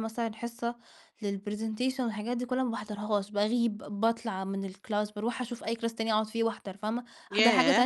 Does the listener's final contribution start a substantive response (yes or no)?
no